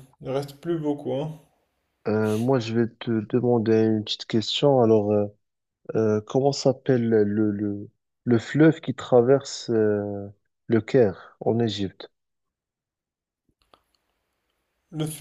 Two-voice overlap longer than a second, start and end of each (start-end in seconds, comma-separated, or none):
none